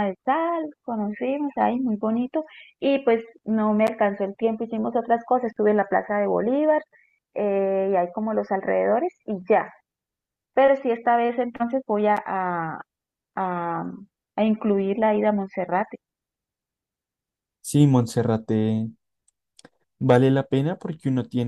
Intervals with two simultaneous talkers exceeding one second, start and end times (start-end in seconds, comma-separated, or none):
none